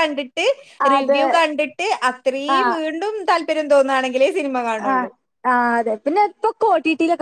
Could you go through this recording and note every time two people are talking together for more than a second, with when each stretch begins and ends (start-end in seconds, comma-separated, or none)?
none